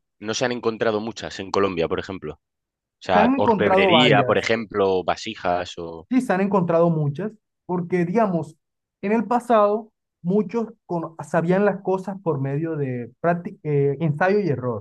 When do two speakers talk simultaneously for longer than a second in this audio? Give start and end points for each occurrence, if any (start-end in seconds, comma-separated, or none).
3.1-4.5